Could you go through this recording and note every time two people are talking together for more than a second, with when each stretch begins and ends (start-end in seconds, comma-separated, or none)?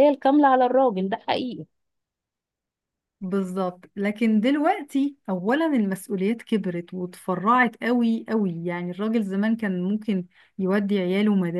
none